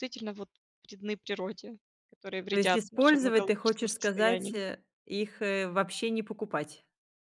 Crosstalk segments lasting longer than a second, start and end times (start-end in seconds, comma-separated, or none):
2.5-4.6